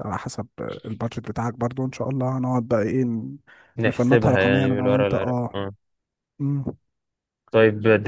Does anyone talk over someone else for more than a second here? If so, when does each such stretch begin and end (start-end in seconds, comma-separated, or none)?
3.8-5.6